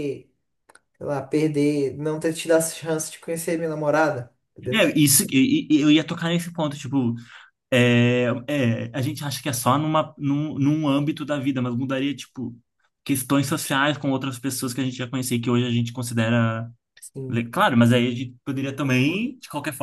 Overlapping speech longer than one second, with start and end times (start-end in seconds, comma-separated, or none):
none